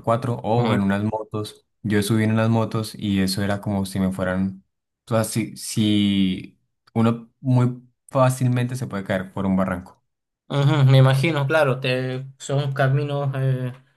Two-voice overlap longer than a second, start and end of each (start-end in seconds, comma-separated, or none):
none